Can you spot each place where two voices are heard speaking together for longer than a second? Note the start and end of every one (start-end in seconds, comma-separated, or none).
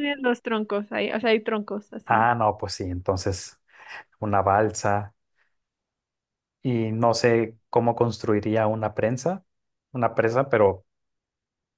none